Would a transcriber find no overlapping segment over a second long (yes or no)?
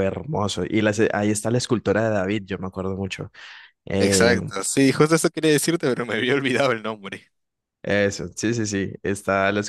yes